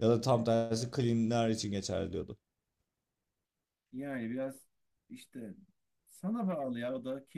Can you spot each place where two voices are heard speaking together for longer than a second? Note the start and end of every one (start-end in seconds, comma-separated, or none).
none